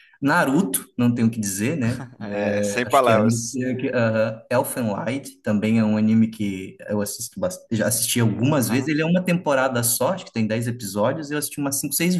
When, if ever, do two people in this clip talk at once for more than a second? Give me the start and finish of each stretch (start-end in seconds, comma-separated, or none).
2.2-3.6